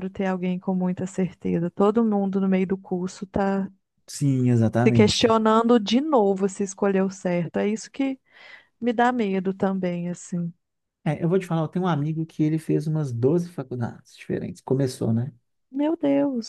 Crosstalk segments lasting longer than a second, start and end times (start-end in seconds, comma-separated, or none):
none